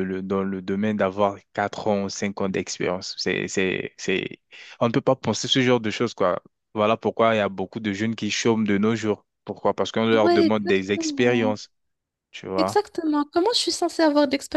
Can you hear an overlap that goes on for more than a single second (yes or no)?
yes